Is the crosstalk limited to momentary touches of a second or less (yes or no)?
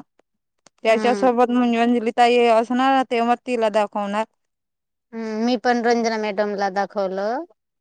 yes